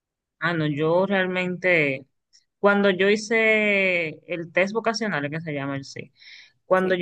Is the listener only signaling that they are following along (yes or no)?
yes